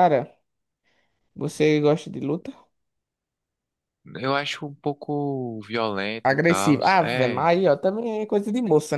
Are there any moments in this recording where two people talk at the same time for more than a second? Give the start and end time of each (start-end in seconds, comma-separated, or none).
6.2-7.5